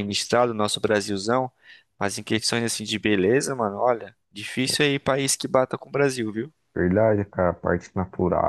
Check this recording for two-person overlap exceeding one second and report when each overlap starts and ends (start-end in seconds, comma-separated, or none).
none